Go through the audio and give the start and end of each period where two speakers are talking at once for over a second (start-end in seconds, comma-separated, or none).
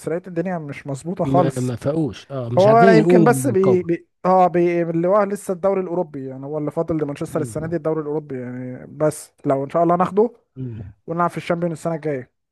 2.6-3.9